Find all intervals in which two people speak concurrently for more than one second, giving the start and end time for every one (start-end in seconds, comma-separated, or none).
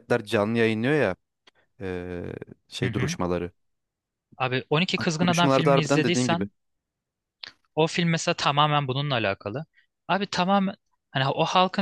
5.2-6.5